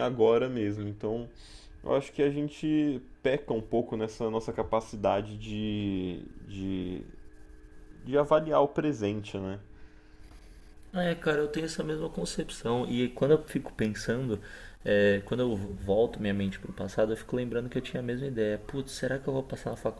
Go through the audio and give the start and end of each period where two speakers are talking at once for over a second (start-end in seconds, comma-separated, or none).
none